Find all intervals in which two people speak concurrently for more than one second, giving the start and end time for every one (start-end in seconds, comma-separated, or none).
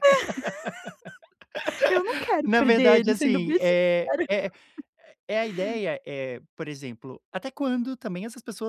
2.5-4.3